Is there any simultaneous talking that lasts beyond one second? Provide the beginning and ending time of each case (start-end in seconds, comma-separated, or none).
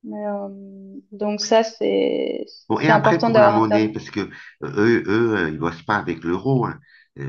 2.7-3.9